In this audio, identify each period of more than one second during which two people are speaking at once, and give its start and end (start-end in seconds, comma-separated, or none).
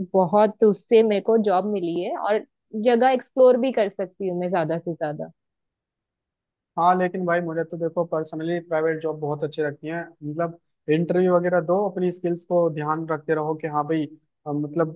none